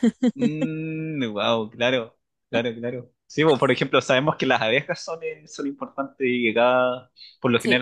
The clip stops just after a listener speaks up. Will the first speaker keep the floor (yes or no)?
yes